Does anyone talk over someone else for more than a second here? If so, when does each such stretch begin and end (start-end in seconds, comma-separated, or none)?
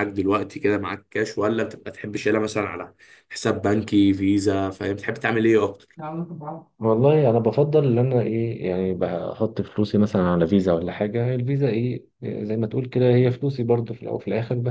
none